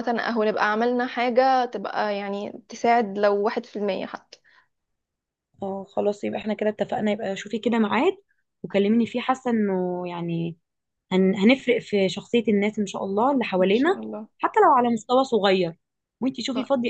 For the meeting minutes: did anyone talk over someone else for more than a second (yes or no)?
no